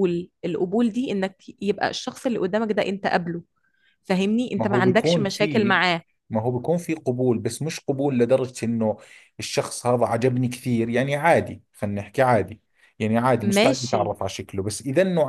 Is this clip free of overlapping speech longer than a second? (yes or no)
no